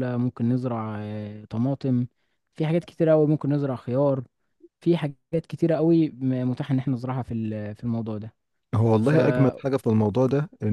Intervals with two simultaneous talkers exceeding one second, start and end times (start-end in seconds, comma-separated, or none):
none